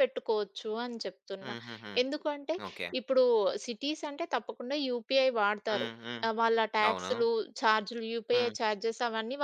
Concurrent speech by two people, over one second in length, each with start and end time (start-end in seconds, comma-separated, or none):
none